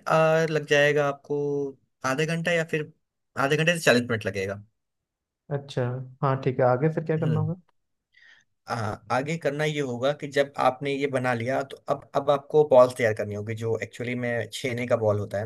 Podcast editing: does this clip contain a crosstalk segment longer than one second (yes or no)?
no